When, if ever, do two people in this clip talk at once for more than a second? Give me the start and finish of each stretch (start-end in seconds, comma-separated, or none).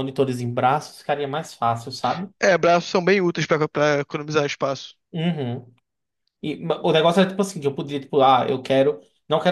none